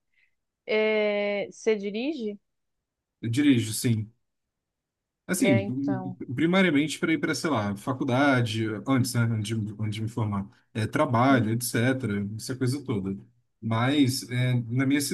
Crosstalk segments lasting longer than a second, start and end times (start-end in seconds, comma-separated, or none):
none